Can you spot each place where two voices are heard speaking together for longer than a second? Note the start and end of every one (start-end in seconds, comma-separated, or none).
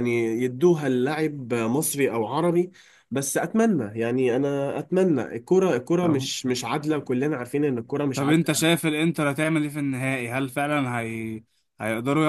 none